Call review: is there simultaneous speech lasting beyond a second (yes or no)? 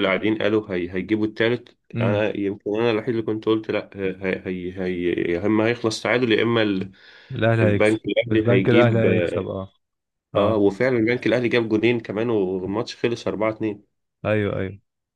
yes